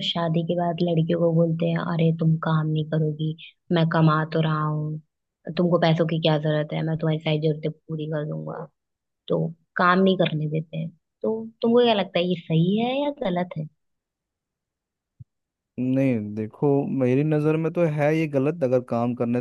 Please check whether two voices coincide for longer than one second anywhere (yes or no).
no